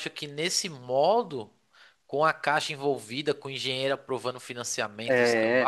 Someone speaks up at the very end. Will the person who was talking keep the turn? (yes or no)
yes